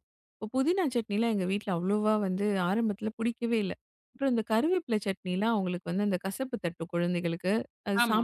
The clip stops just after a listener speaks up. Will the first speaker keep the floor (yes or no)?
yes